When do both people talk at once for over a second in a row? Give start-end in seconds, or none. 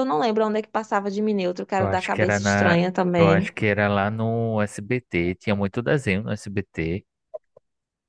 1.8-3.5